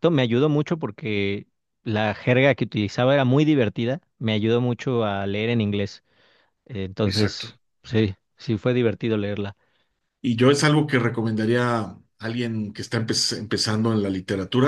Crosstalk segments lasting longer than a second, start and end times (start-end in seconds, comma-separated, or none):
none